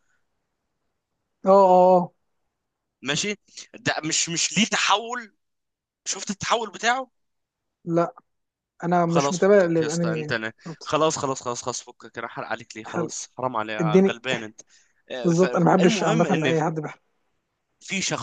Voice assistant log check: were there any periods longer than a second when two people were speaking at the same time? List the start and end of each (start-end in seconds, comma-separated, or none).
9.1-10.9, 15.2-16.6